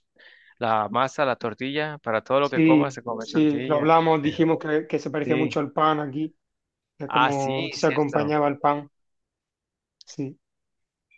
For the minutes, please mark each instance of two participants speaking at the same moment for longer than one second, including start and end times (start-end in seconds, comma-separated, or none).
2.4-3.9, 7.1-8.3